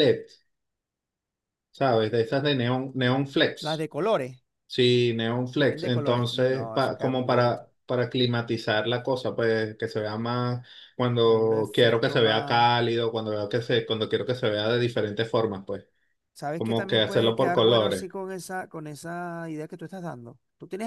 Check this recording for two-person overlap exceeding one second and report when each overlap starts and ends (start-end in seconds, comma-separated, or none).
5.6-7.6, 11.2-12.7, 16.6-18.1